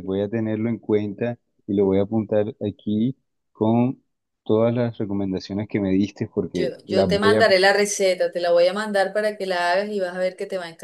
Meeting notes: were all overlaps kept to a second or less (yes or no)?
no